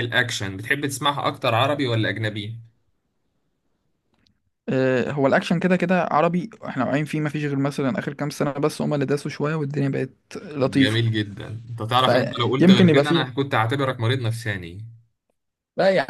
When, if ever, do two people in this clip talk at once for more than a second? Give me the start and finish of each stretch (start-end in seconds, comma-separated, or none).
12.0-13.3